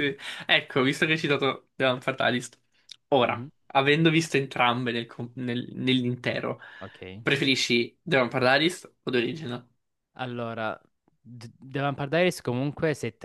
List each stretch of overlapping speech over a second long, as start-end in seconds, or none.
none